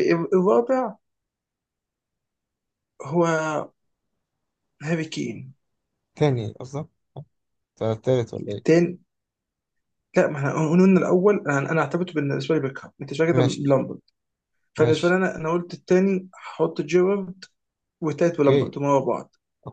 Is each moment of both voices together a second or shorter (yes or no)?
yes